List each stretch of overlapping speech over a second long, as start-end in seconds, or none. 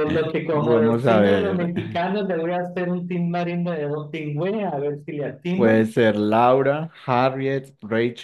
0.5-1.7